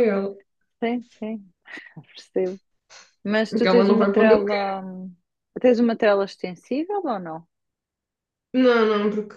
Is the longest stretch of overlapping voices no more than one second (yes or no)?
no